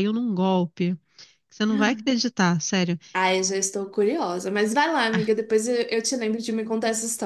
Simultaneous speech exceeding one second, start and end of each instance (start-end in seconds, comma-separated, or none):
none